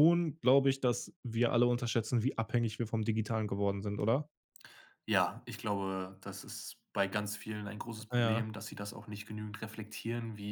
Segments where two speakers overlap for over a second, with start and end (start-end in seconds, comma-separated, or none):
none